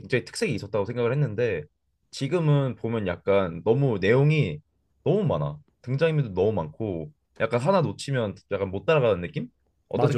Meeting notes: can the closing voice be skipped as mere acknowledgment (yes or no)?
no